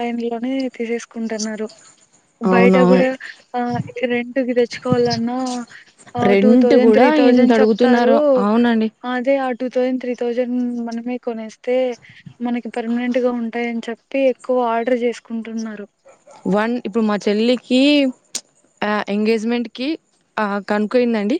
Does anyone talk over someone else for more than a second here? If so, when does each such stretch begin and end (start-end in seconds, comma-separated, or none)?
6.3-8.2